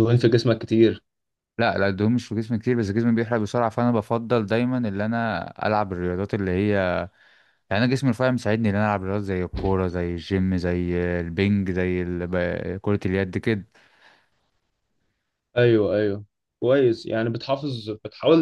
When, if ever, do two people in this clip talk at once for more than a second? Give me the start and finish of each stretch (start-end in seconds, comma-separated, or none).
none